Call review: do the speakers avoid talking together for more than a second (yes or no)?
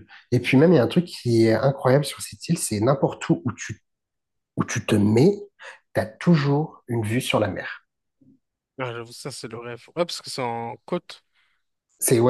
yes